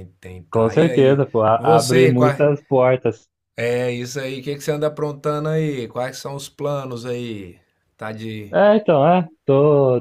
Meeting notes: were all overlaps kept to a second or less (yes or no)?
no